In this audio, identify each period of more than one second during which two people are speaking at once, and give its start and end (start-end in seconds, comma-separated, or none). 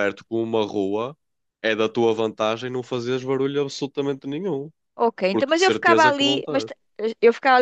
5.3-6.7